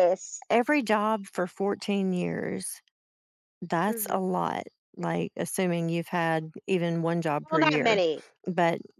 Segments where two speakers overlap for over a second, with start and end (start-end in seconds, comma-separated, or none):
none